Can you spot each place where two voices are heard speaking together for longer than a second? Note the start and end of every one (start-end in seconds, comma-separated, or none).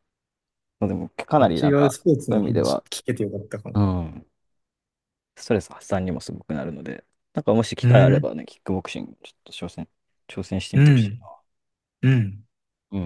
1.4-2.8